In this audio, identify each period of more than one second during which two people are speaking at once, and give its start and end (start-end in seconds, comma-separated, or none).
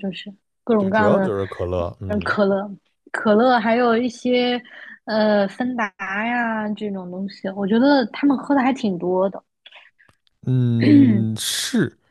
none